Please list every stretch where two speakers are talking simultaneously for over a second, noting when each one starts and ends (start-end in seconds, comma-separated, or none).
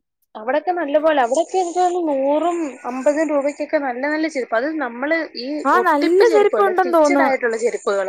5.7-7.4